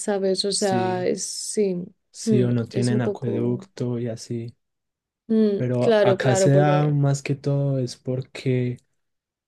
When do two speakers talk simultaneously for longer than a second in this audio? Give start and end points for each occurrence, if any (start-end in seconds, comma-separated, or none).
2.2-3.6, 5.6-6.9